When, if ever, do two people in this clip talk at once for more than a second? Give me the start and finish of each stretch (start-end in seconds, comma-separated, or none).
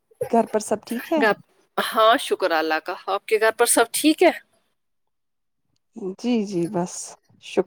none